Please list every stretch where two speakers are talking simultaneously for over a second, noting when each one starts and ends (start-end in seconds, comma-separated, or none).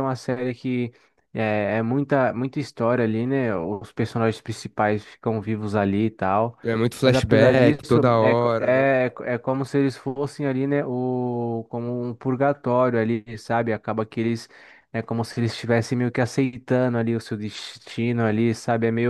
7.0-8.8